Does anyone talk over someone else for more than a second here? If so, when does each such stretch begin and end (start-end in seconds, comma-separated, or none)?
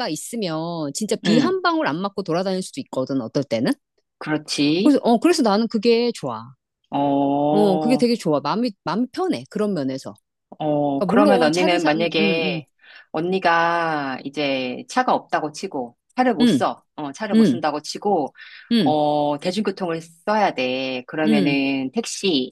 11.0-12.6